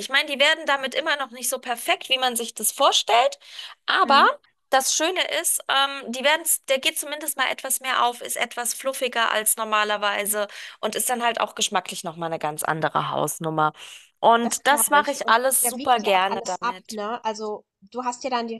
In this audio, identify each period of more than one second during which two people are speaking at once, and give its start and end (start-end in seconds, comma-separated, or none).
14.4-17.0